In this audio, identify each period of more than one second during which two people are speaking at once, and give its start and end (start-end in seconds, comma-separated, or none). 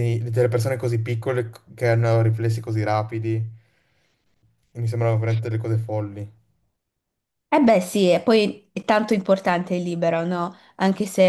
none